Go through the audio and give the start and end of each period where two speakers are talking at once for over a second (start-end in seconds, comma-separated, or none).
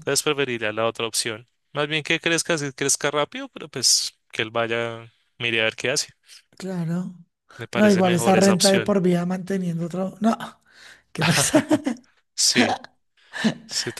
7.7-9.0